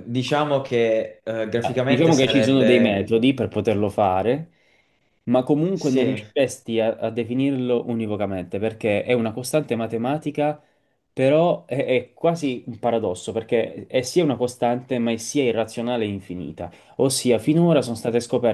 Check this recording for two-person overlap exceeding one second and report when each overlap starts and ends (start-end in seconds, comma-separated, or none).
1.6-3.1